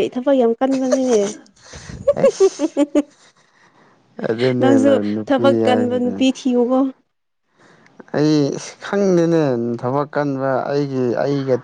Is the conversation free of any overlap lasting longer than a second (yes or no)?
no